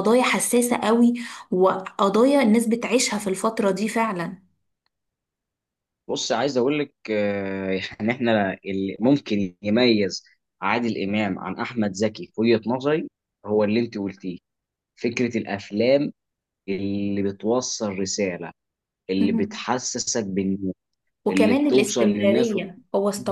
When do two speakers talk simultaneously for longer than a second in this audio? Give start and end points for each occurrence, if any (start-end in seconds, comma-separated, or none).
21.3-22.6